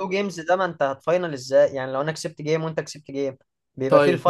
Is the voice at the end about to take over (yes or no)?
yes